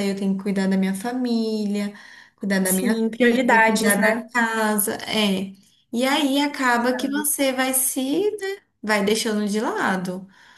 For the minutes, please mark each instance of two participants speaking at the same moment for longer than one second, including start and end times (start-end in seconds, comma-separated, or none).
2.6-4.3